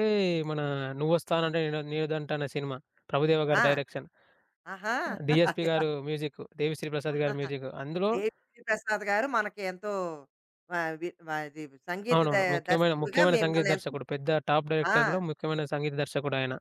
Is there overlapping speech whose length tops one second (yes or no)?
yes